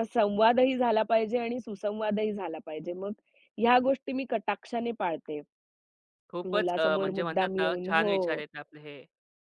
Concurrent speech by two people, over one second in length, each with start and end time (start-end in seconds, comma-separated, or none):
6.5-8.2